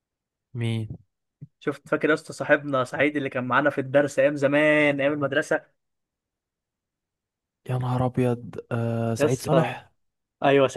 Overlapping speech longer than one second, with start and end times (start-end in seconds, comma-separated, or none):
none